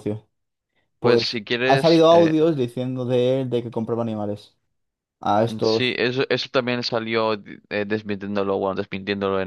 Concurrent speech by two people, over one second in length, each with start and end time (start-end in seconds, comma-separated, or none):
1.0-2.3